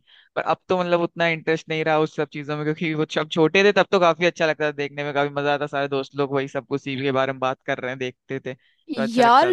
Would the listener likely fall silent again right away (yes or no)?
no